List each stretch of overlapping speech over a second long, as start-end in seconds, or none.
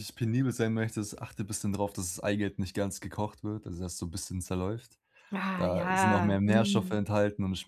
5.6-7.1